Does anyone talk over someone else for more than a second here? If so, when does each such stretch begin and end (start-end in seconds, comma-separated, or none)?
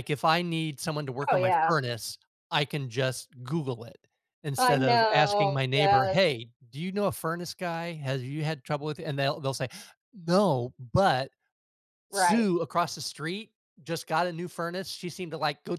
4.6-6.2